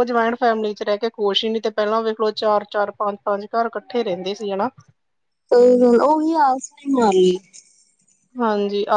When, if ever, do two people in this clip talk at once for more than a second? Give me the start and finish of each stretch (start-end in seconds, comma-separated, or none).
none